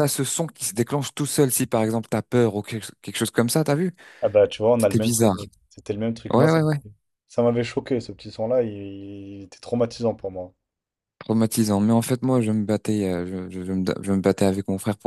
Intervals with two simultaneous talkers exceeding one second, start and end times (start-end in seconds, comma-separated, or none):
none